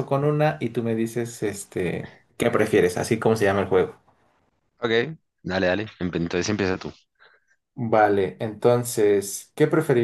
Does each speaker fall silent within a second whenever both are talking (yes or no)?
yes